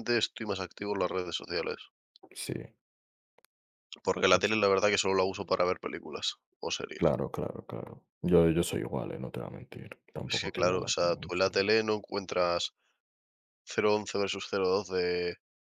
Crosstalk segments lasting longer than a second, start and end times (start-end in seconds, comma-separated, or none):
10.3-11.5